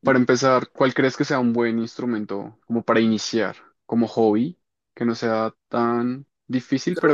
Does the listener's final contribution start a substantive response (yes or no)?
yes